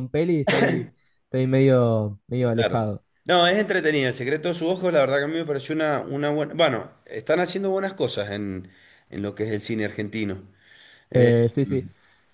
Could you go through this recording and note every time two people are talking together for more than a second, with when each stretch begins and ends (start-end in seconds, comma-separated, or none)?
none